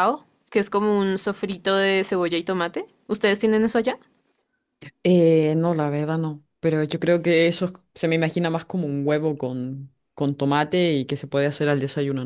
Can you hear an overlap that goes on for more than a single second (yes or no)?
no